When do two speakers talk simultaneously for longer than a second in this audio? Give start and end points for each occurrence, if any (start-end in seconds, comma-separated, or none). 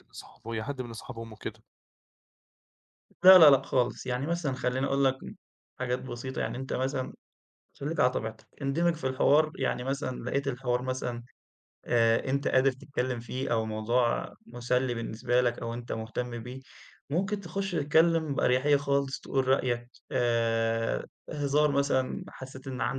none